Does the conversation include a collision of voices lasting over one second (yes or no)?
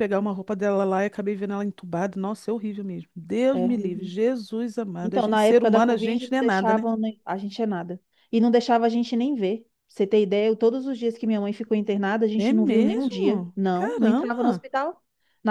yes